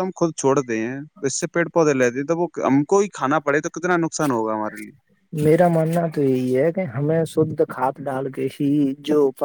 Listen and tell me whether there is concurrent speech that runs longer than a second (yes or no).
no